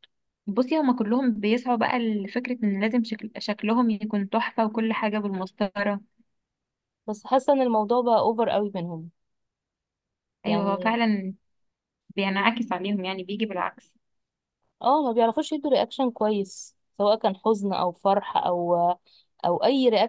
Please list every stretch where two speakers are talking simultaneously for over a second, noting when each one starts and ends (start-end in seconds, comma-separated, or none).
none